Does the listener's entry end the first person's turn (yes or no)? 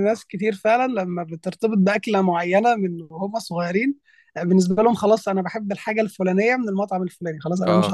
yes